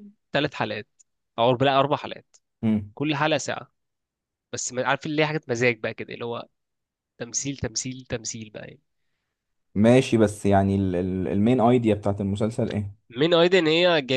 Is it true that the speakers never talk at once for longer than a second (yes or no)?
yes